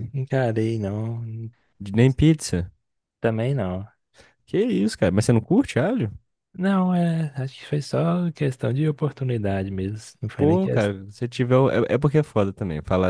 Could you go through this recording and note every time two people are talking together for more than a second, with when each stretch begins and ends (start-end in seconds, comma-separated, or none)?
none